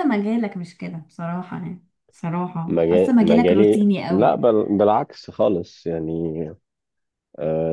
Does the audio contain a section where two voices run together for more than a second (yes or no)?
yes